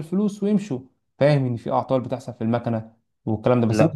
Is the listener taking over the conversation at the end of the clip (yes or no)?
yes